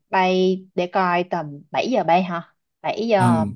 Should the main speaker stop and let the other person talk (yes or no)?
yes